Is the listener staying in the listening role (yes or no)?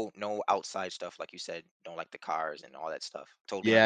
no